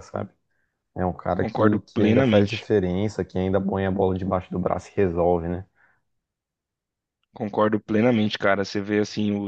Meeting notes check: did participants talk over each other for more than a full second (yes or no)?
yes